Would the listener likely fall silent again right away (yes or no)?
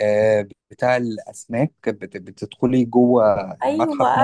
no